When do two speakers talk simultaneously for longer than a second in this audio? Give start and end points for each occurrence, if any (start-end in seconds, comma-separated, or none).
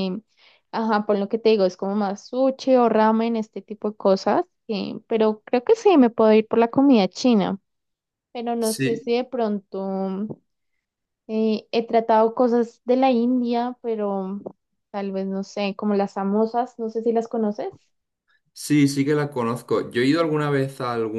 none